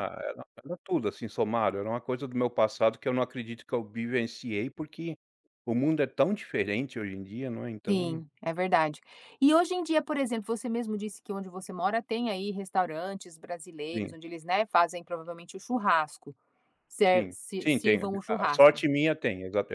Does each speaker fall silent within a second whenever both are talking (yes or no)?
no